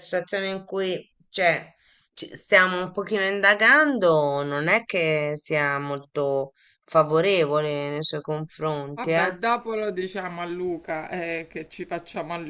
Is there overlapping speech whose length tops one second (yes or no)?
no